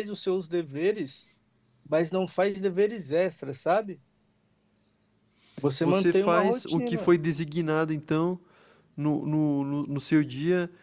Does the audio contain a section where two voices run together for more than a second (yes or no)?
yes